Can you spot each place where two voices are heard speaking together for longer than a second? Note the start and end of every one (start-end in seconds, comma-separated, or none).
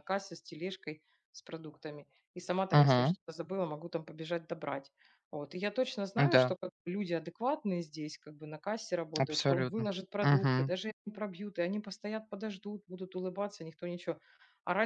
9.2-10.7